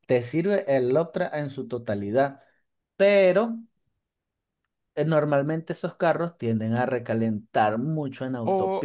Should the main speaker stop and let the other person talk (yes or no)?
yes